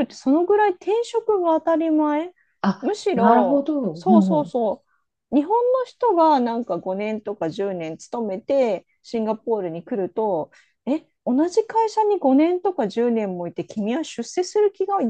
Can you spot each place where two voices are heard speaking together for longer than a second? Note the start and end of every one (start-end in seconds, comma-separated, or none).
2.8-4.5